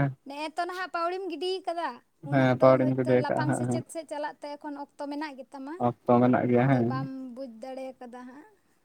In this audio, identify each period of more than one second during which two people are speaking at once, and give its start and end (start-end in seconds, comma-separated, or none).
2.3-3.8